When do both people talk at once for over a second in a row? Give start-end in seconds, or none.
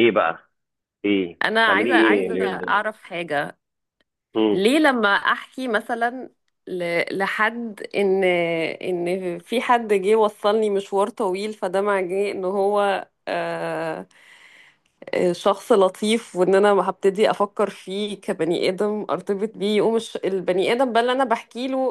1.4-2.9